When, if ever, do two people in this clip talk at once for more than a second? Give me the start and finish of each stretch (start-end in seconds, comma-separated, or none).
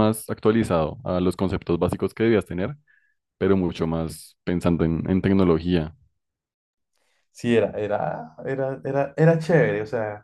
none